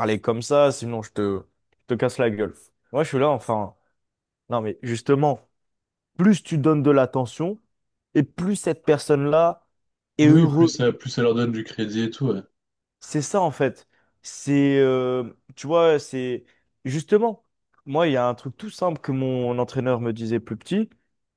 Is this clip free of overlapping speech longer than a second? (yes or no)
yes